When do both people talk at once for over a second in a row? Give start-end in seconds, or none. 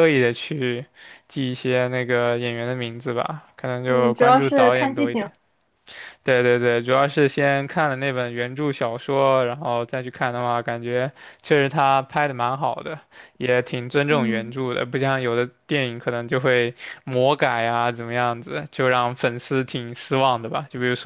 3.9-5.3